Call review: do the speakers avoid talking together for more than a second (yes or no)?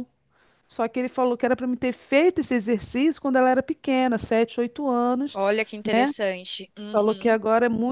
yes